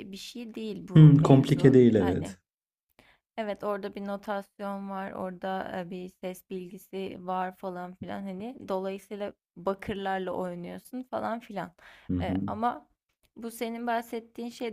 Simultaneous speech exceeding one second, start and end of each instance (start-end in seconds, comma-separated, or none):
0.9-2.4